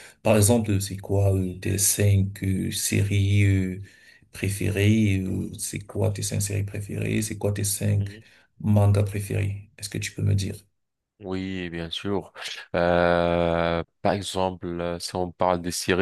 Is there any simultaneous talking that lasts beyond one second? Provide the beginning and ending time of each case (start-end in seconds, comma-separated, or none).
none